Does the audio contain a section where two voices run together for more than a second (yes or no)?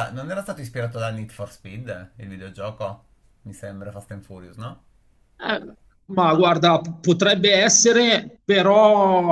no